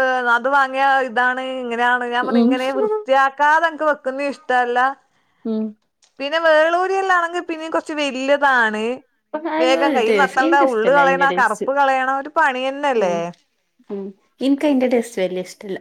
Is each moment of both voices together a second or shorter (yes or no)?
no